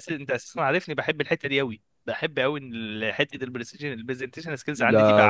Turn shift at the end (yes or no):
yes